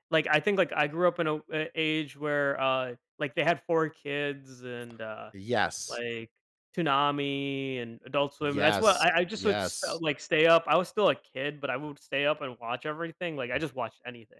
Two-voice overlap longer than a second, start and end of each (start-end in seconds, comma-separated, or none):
8.4-10.0